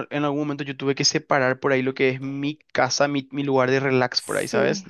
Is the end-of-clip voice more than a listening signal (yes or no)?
yes